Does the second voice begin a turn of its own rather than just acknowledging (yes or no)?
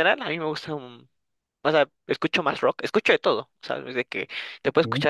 no